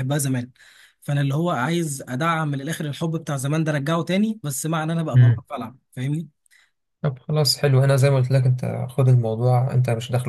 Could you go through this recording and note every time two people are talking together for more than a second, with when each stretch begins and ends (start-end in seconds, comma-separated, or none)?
none